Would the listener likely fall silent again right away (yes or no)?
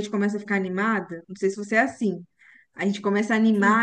yes